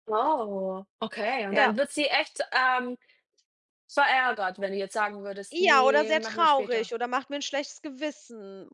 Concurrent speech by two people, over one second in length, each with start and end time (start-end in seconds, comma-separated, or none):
5.5-6.9